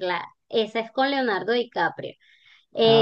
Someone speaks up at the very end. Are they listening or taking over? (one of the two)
listening